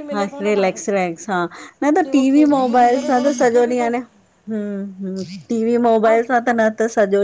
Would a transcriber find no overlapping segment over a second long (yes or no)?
no